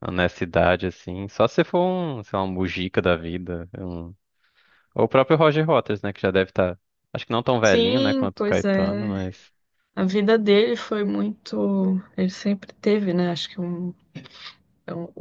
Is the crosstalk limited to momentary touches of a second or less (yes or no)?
no